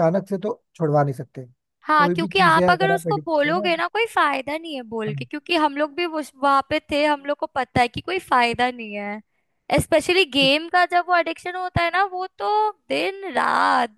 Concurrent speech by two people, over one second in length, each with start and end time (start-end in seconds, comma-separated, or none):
2.0-3.7